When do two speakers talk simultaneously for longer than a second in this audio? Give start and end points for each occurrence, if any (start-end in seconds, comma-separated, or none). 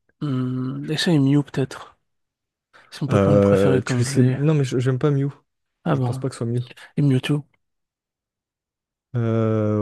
3.1-4.4